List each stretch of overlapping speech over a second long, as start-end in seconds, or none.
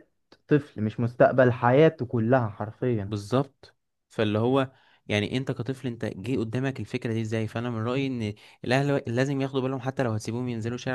none